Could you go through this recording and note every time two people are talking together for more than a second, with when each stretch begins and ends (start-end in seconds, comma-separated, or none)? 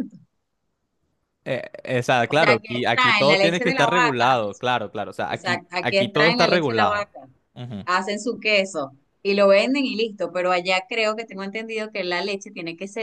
2.2-4.6, 5.3-7.1